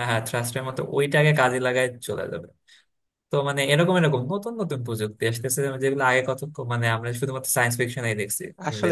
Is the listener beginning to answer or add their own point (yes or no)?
yes